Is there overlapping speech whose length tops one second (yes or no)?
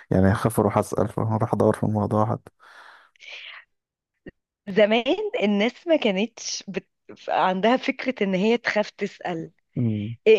no